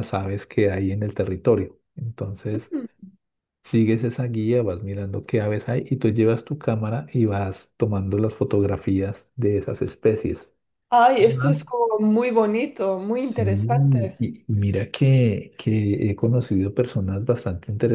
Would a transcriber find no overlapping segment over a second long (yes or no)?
yes